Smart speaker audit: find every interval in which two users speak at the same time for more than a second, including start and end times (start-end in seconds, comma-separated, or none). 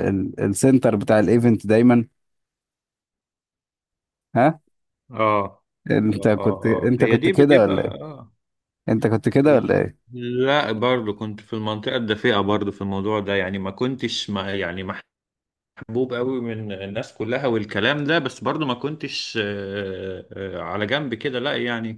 6.2-8.0